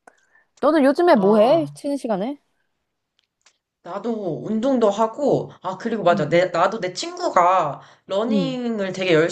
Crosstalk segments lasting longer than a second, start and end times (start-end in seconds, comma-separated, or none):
none